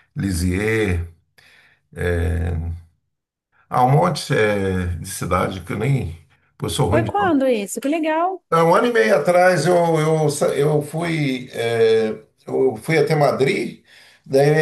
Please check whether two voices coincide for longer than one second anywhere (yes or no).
no